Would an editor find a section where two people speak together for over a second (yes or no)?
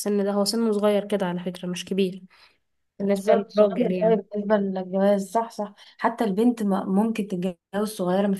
yes